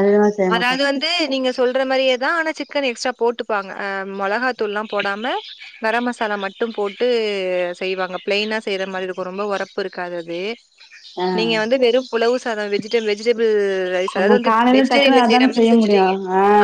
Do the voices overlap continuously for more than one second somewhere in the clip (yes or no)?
yes